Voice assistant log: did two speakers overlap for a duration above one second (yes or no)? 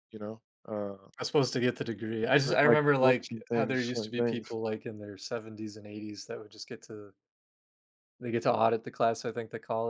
yes